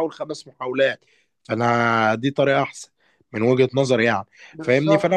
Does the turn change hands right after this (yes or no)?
no